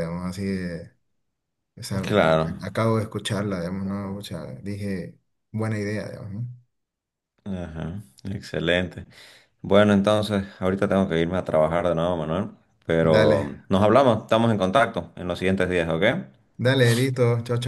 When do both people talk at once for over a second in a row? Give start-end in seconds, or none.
none